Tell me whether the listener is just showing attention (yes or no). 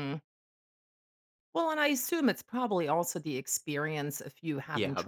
yes